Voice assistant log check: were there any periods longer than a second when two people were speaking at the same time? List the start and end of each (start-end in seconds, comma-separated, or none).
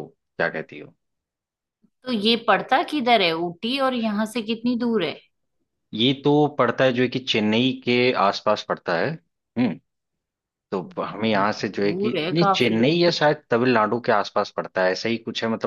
11.1-12.8